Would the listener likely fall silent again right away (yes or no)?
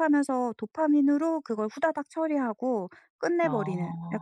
yes